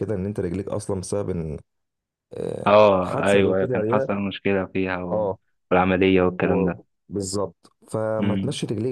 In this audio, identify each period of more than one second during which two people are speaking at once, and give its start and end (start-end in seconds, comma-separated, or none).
2.7-4.1